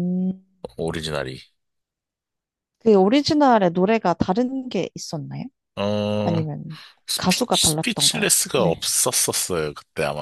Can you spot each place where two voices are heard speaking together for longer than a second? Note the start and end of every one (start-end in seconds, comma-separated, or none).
7.1-8.9